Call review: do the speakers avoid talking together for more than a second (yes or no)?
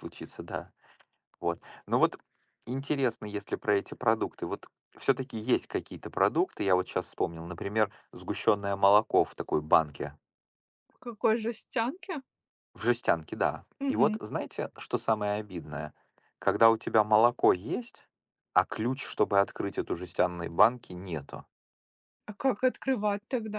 yes